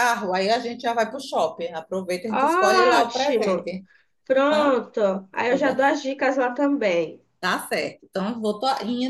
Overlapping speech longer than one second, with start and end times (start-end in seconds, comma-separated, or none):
2.3-3.7